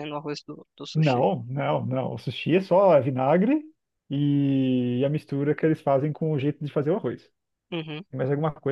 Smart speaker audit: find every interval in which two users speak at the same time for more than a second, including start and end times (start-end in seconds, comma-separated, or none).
none